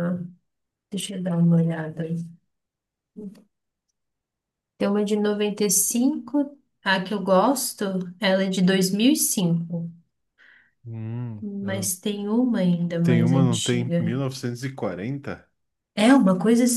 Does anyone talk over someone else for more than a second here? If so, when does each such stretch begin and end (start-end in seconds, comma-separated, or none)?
13.0-14.2